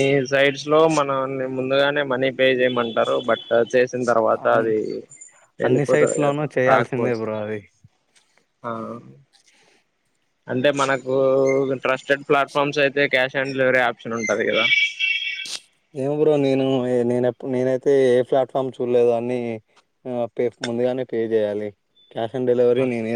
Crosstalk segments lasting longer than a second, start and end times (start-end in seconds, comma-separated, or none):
5.7-7.2